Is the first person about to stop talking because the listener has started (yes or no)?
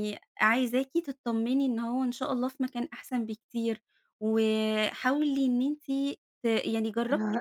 yes